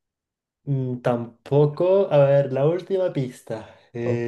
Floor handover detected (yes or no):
yes